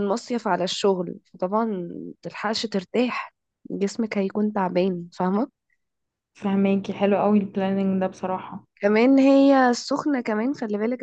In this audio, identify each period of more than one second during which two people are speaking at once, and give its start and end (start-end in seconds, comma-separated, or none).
none